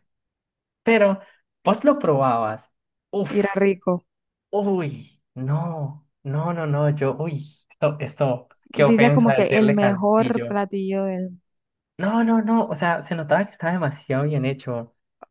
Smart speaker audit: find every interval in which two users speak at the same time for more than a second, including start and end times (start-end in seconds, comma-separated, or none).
8.9-10.6